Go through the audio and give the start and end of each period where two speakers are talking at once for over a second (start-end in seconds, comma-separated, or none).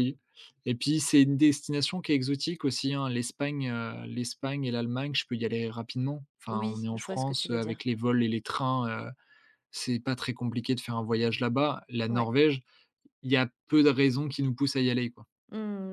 6.5-7.8